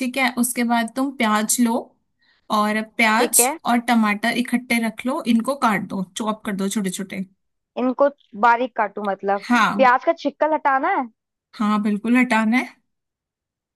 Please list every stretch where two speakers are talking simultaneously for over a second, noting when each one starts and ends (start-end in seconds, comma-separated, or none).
none